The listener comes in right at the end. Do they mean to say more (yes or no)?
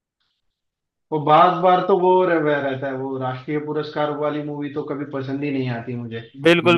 yes